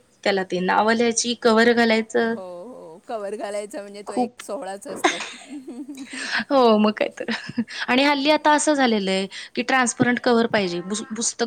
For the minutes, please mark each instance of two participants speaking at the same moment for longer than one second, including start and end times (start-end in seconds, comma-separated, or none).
none